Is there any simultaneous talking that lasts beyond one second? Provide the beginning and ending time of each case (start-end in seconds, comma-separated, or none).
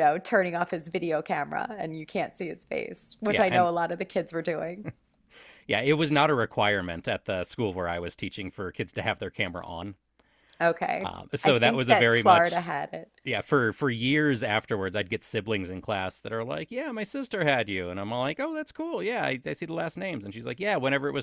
11.0-12.6